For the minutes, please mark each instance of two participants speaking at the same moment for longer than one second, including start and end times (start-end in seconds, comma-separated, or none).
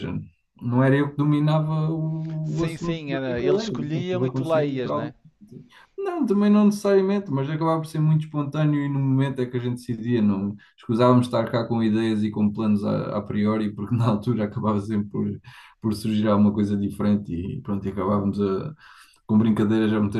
2.4-5.1